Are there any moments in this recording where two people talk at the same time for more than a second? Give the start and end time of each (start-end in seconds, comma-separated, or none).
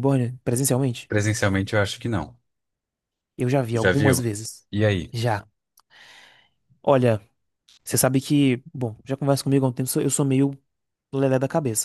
none